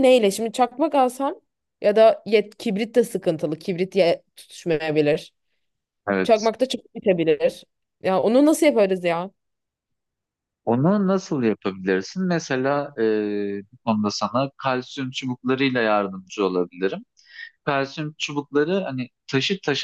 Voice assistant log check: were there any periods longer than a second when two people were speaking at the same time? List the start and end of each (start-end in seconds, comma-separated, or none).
none